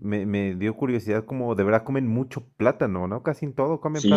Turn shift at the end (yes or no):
yes